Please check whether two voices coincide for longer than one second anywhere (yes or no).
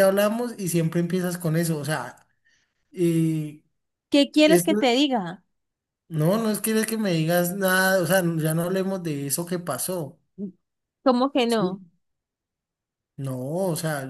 no